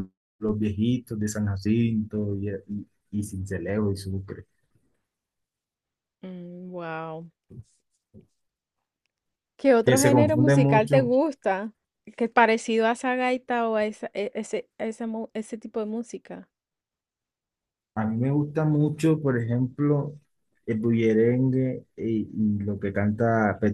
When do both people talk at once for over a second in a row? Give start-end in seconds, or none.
9.8-11.1